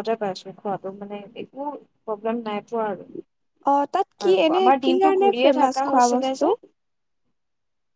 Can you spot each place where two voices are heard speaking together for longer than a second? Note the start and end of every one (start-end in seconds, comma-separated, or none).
4.2-6.5